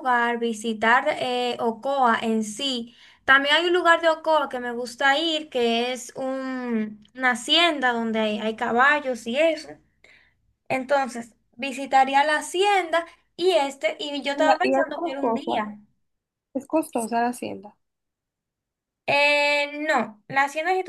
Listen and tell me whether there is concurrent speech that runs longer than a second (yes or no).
yes